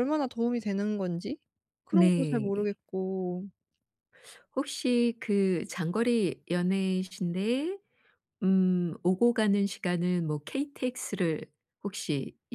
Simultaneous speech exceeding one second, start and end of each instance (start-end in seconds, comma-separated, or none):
none